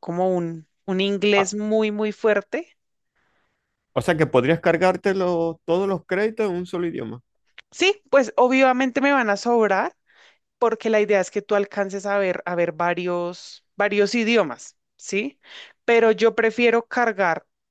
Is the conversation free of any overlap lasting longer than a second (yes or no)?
yes